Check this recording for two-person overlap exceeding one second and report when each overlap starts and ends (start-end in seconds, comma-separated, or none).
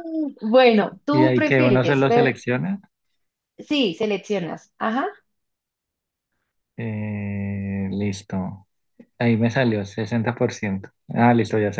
1.1-2.4